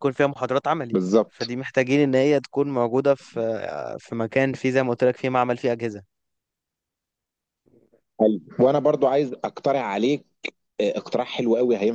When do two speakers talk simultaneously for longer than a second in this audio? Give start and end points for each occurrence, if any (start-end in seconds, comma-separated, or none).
none